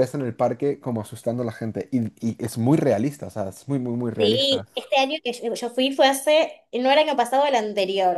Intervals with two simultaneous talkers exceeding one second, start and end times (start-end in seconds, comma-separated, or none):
none